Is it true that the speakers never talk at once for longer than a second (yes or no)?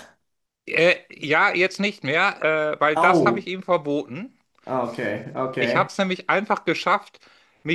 yes